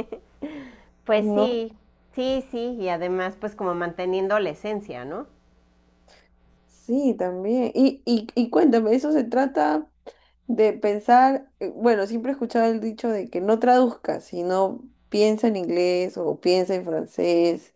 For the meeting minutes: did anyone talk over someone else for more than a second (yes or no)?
no